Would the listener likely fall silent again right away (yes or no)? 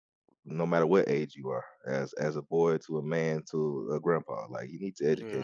no